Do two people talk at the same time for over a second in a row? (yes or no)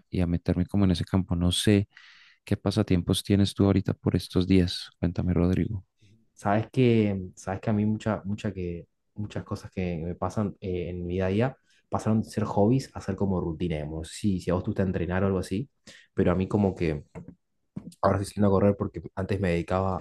no